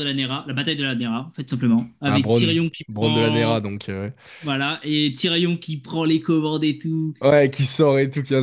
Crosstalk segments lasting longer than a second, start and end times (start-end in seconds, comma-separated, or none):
2.0-3.6